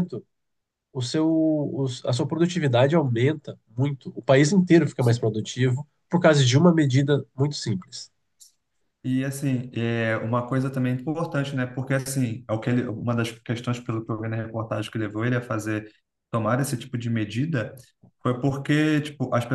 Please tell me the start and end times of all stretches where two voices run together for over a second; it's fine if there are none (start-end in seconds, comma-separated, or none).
none